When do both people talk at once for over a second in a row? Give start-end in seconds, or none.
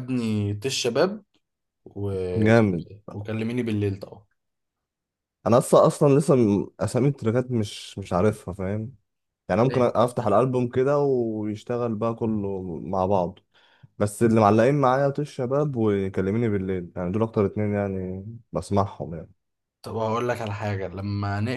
none